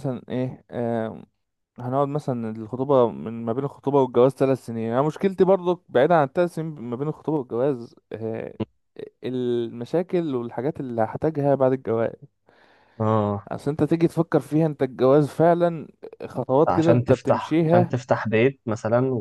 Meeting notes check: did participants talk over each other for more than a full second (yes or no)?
yes